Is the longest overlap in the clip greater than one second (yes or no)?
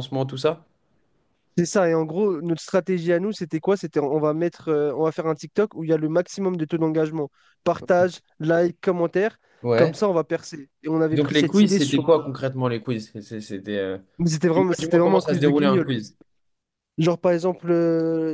yes